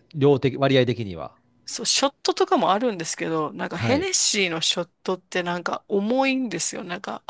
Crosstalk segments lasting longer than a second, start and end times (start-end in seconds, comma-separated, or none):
none